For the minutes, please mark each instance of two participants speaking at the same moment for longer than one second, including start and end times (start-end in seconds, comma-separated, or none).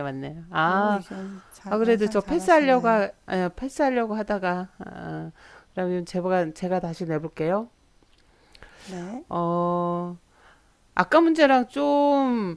1.7-3.0